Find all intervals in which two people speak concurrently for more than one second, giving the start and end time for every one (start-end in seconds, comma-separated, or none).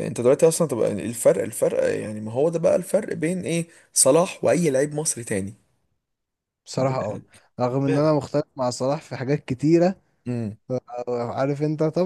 none